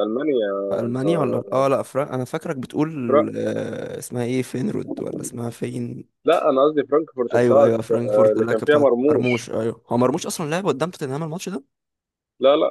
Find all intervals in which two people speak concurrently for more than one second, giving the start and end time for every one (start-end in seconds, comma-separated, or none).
7.3-9.4